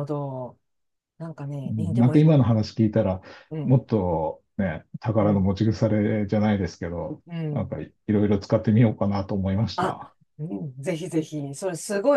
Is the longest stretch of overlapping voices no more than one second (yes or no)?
yes